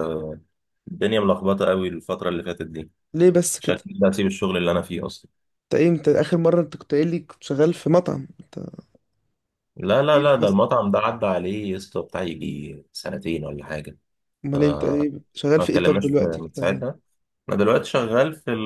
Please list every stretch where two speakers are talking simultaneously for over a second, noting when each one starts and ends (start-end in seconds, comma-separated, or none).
15.6-16.9